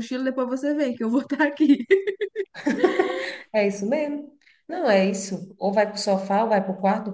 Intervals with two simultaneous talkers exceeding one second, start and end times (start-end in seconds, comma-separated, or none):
none